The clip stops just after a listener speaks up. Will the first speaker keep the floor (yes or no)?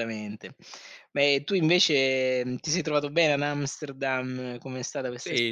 no